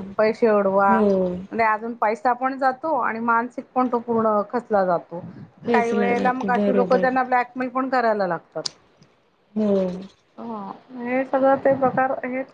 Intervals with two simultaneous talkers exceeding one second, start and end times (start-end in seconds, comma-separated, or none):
5.7-7.0